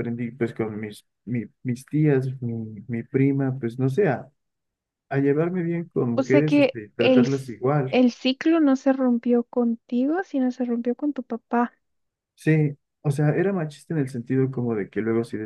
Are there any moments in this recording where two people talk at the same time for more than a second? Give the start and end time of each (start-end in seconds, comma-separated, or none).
6.2-8.0